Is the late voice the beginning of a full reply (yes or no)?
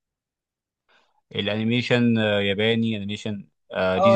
yes